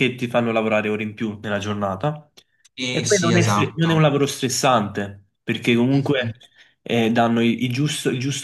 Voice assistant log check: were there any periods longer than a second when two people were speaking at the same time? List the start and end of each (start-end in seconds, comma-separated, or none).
2.9-4.2